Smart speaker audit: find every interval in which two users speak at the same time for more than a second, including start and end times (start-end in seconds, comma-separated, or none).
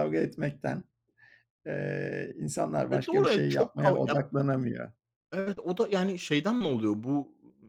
2.9-4.2